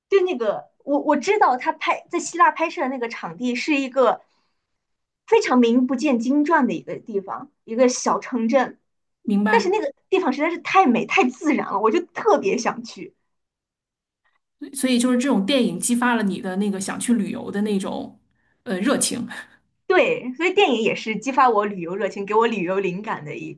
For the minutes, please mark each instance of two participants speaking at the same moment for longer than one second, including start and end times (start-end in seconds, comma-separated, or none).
none